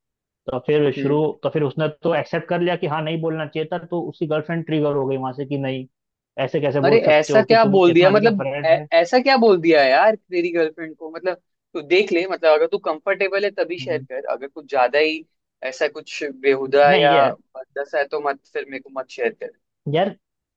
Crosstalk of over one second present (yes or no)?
yes